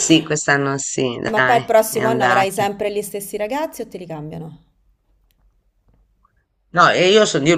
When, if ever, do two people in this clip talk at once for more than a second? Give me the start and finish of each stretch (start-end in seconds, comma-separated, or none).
1.3-2.6